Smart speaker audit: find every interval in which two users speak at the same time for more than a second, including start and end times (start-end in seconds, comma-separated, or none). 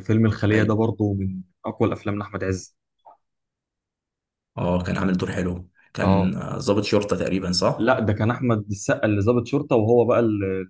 none